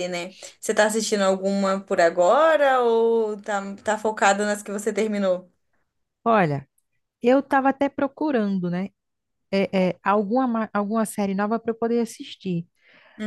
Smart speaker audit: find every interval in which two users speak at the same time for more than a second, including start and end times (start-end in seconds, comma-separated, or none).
none